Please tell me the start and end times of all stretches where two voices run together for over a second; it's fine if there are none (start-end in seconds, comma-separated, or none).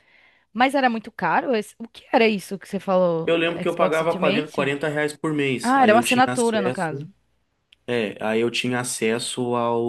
3.2-4.8, 5.6-7.1